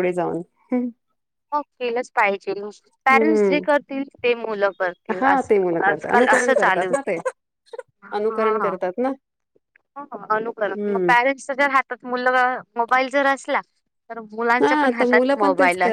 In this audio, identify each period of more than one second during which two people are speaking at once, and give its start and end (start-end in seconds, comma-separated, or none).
5.2-6.9